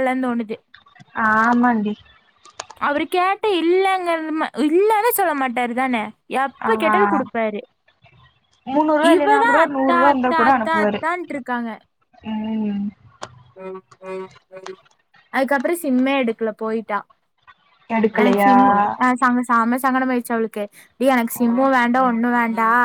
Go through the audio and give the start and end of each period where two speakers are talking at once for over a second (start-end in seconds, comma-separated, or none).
9.1-11.0